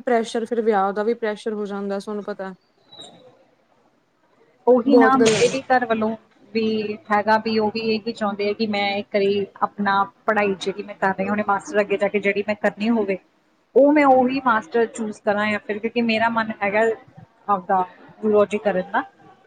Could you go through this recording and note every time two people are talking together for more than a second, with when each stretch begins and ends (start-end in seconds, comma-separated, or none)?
none